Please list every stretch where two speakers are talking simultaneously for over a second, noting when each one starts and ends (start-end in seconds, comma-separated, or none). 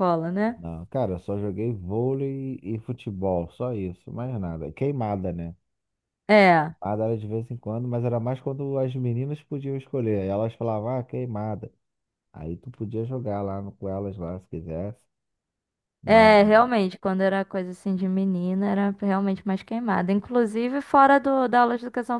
none